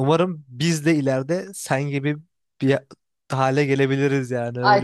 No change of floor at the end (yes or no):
no